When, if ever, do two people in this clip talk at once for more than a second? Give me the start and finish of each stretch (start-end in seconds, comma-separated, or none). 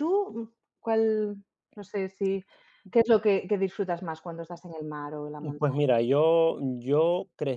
none